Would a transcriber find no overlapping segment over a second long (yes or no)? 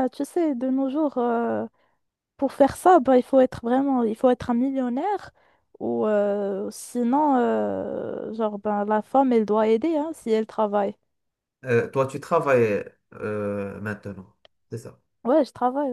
yes